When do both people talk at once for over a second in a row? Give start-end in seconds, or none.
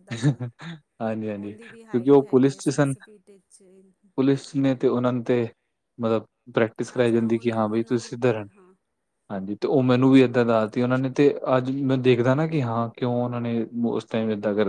1.3-2.9, 7.0-8.4